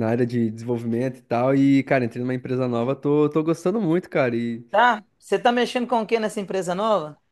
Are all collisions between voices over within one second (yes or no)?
yes